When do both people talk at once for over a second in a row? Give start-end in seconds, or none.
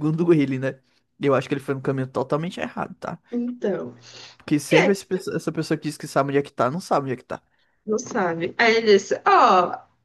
none